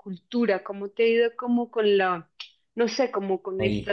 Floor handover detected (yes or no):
no